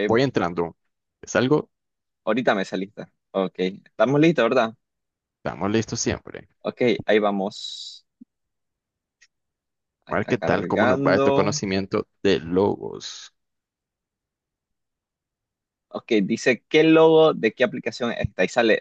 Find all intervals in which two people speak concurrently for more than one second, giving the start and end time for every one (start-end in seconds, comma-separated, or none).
10.1-11.5